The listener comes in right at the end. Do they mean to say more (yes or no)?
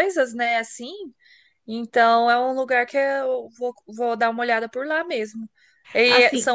no